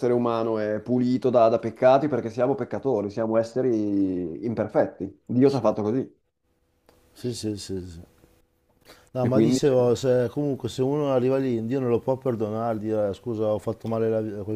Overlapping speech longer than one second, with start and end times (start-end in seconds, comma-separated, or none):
none